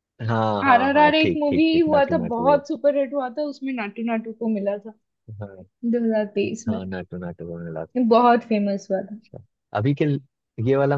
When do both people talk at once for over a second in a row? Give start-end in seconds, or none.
0.7-2.6